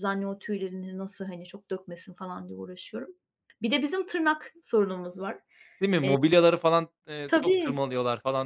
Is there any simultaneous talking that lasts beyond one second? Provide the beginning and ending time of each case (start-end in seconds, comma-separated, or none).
none